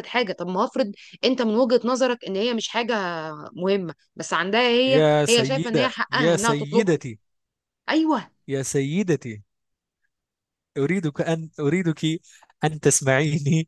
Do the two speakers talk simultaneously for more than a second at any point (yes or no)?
yes